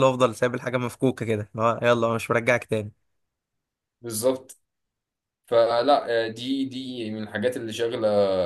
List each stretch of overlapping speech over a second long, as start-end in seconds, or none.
none